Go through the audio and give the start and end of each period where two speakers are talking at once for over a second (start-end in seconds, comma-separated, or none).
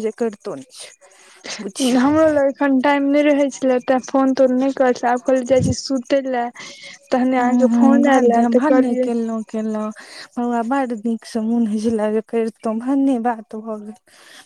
7.4-9.1